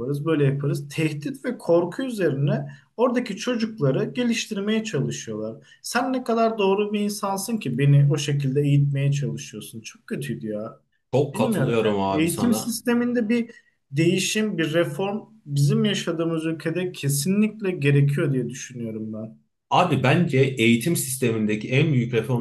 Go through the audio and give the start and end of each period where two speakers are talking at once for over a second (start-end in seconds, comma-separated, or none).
11.3-12.8